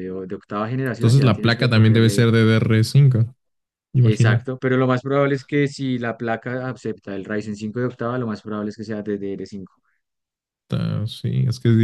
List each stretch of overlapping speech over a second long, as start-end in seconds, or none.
1.0-2.3